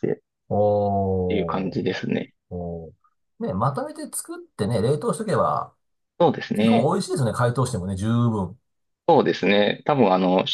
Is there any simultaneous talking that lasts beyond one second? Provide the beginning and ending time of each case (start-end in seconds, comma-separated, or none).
none